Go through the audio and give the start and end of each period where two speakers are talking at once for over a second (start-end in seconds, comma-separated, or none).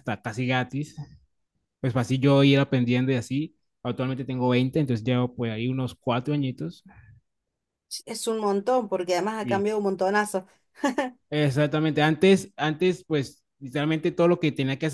none